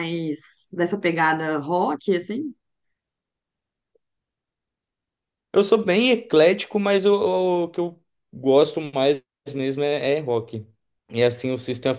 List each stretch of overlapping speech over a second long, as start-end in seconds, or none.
none